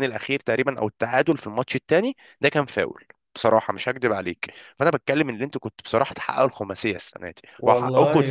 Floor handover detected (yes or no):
yes